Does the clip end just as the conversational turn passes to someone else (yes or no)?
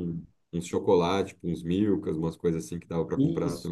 yes